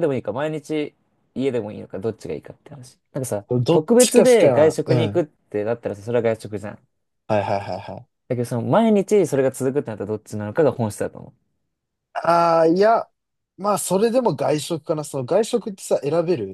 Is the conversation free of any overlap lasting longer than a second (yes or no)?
no